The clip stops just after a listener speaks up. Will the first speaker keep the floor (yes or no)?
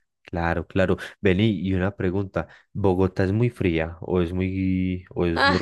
no